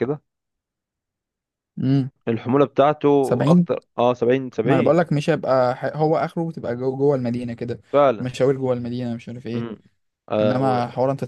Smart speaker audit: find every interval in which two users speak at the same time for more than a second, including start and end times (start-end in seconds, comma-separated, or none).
none